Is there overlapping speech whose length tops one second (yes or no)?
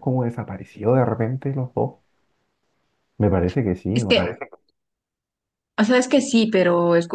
no